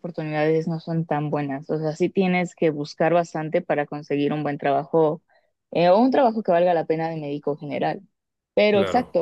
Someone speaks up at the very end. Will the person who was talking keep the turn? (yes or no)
yes